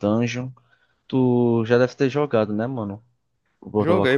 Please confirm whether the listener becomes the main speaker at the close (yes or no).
yes